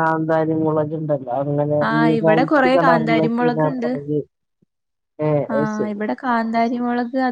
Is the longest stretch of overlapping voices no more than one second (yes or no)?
no